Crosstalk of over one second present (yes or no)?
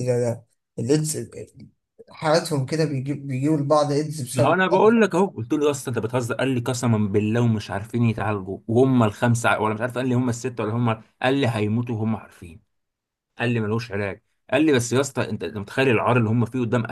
no